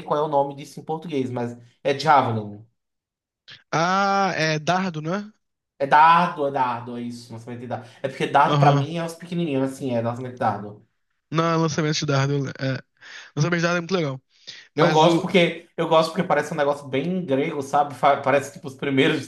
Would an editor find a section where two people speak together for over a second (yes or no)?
no